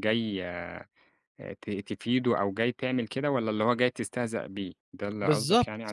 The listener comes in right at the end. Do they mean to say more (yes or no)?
yes